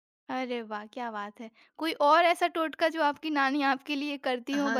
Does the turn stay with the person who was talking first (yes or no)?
no